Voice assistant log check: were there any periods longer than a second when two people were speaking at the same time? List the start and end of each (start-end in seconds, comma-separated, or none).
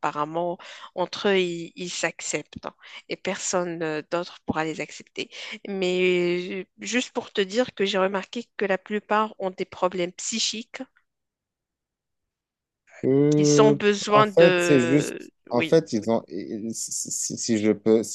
13.3-15.7